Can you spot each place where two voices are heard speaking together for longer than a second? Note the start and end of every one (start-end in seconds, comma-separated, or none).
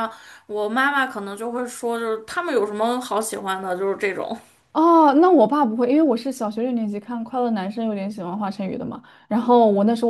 none